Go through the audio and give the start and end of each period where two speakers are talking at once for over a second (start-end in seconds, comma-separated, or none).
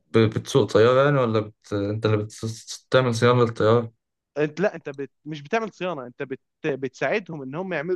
none